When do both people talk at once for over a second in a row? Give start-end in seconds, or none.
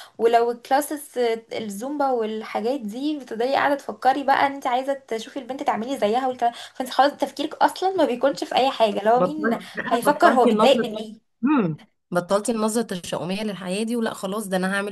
9.1-10.8